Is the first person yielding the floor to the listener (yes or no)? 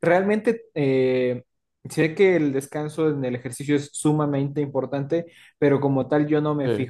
no